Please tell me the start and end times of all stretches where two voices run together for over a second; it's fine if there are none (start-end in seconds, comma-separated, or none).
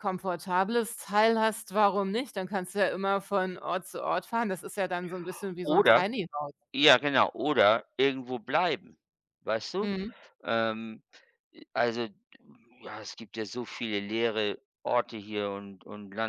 none